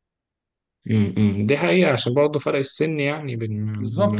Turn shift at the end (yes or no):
yes